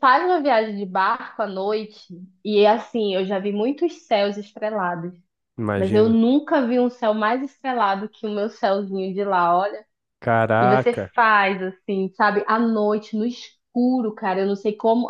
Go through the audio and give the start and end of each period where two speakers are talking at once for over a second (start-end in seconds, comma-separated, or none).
none